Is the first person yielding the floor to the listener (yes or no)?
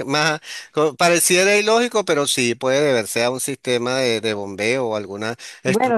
yes